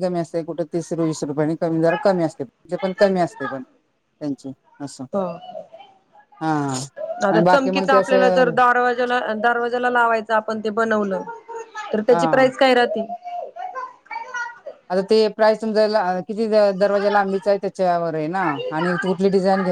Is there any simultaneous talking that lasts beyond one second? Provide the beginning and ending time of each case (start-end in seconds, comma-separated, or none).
7.3-8.5